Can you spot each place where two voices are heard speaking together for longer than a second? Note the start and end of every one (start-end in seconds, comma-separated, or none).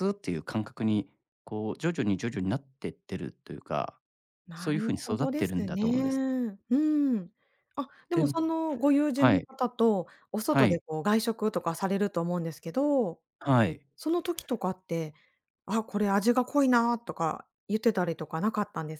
4.5-6.2